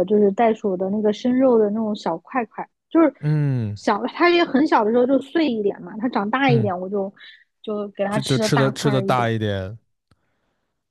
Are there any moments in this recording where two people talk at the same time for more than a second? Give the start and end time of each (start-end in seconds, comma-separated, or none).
8.1-9.3